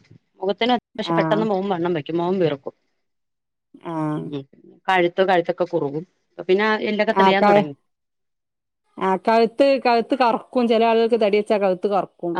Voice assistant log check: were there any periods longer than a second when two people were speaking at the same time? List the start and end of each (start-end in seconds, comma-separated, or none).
none